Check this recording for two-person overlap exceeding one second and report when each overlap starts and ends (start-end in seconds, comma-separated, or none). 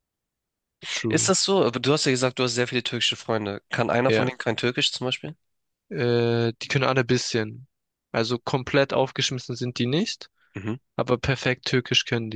none